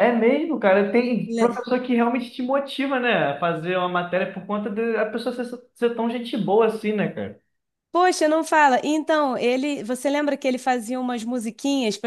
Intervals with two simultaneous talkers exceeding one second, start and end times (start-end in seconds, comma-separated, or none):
none